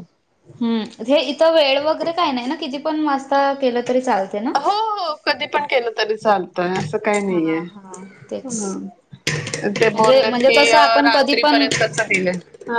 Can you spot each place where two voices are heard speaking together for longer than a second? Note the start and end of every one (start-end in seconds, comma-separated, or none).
9.9-11.7